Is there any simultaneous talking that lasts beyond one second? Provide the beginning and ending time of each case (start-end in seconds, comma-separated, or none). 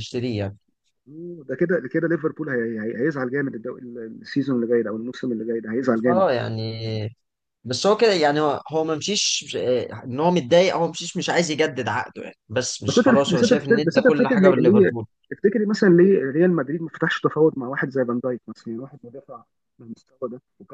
12.9-15.1